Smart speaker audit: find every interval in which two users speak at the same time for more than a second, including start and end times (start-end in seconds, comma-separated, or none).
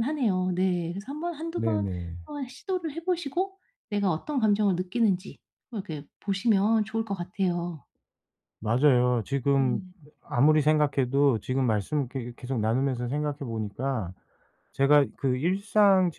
none